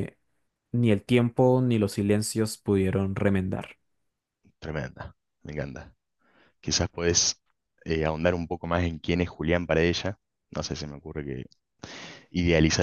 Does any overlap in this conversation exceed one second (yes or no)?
no